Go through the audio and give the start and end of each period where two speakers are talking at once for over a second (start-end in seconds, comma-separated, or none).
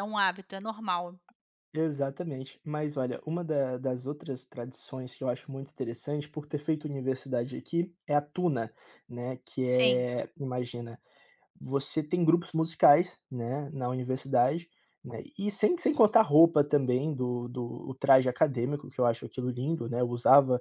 none